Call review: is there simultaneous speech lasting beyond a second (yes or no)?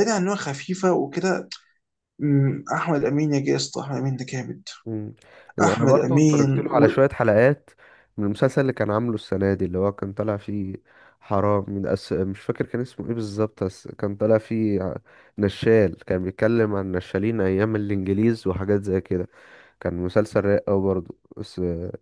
yes